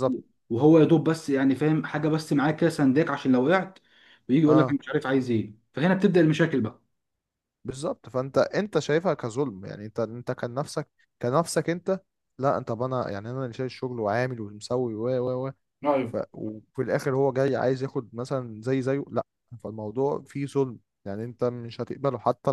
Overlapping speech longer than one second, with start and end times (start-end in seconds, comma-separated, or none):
none